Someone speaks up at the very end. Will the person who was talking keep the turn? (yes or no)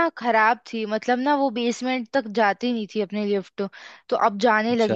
yes